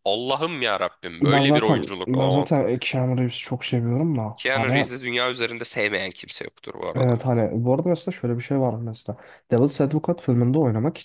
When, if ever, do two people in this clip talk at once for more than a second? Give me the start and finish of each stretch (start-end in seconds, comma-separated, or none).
1.2-2.6